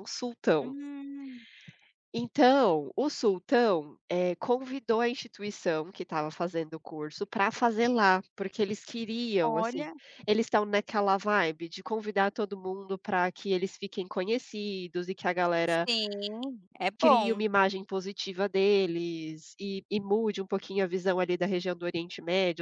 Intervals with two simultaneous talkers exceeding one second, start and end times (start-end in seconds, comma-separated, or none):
none